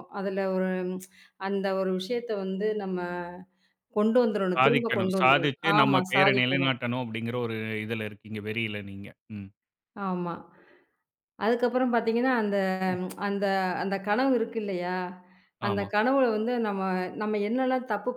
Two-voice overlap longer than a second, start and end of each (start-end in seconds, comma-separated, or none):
4.6-6.8